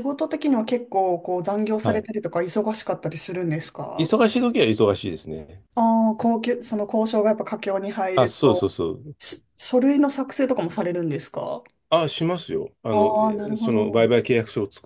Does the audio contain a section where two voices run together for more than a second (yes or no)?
yes